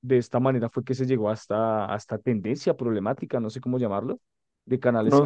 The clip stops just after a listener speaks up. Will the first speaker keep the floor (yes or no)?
yes